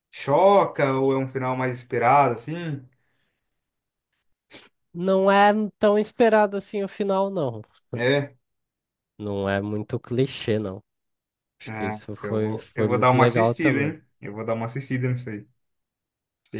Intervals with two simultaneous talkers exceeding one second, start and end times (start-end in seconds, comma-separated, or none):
11.7-13.9